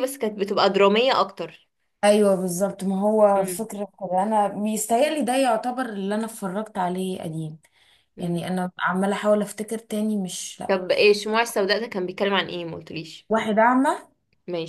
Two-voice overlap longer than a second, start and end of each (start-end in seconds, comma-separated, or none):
none